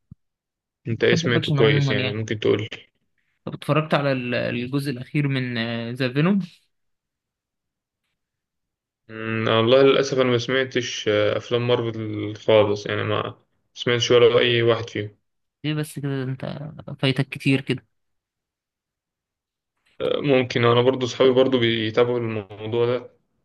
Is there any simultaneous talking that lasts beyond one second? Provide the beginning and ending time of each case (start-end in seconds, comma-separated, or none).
0.9-2.2